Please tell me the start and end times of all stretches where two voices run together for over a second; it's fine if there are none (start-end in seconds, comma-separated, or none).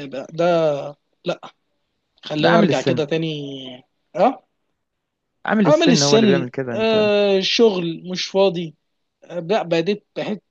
5.7-7.0